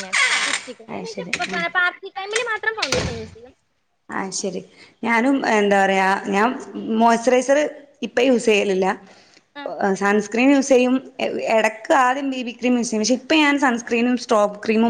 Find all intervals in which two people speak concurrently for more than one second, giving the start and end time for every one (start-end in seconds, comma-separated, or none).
none